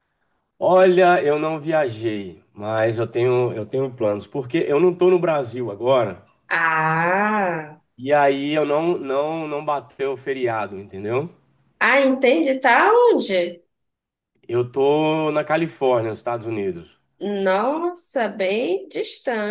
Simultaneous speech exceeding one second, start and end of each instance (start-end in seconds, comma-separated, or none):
none